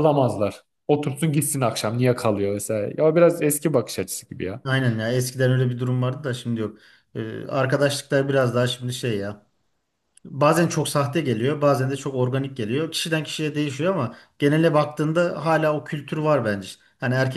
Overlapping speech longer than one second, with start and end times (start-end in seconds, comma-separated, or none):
none